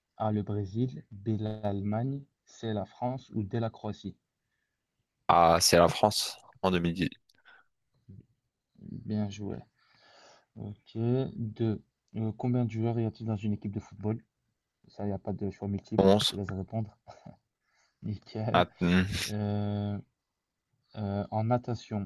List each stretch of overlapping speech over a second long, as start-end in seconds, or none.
none